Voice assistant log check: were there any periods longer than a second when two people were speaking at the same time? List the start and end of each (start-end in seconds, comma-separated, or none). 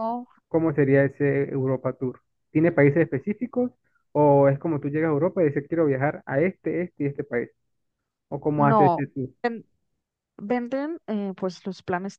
none